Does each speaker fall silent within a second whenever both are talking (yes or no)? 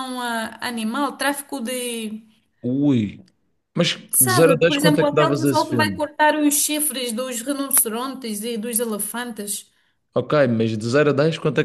no